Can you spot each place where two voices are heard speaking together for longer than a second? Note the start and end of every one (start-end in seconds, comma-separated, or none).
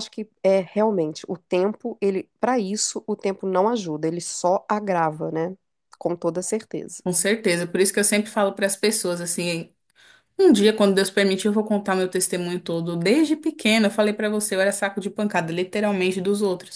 none